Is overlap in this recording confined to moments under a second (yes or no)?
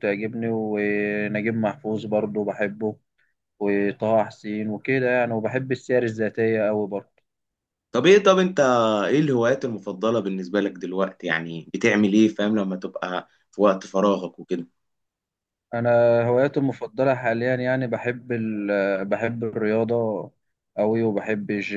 yes